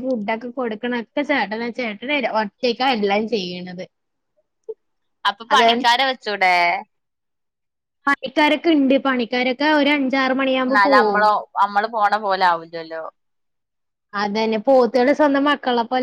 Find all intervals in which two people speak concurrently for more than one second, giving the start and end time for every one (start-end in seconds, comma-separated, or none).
none